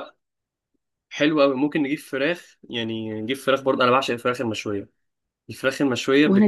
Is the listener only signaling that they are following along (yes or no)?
yes